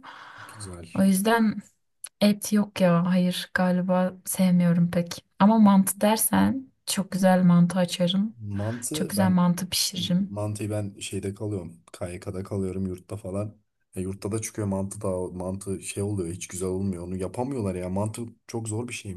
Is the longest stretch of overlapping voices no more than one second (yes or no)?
yes